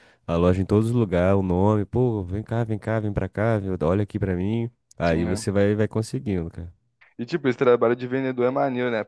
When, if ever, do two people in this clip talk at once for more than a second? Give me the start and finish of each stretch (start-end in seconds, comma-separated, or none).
none